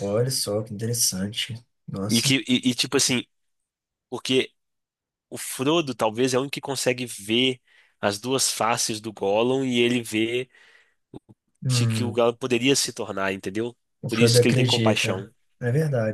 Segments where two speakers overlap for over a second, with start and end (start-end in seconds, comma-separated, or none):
14.0-15.3